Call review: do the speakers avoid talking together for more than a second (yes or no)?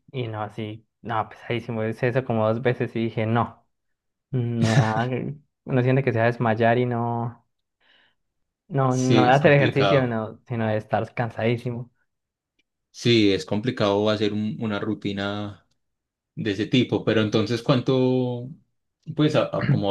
no